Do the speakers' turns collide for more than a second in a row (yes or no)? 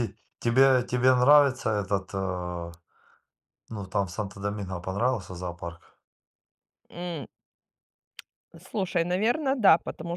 no